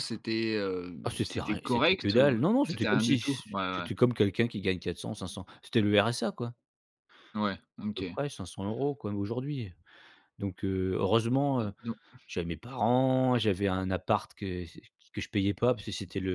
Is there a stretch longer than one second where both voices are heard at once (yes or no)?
yes